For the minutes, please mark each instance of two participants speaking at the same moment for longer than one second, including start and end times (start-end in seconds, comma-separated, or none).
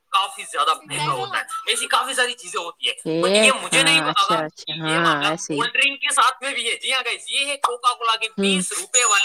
3.0-5.6